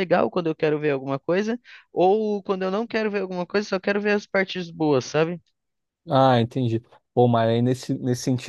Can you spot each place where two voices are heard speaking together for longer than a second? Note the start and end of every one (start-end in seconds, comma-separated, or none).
none